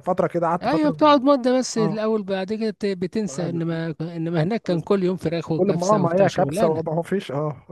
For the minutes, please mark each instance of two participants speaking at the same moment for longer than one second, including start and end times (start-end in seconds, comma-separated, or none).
5.6-6.8